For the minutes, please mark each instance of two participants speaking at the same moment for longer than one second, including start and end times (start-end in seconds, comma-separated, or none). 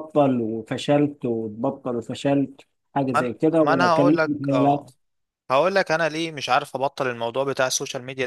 3.2-4.9